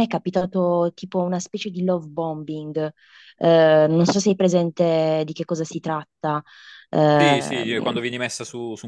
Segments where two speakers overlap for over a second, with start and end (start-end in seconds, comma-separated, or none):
none